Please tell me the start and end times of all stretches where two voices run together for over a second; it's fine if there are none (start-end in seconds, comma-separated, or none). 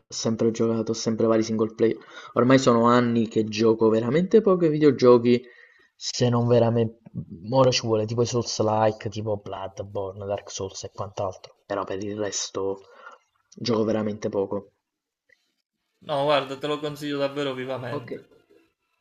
none